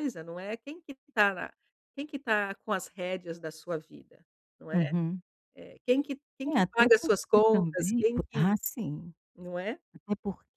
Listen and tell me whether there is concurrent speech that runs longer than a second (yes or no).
yes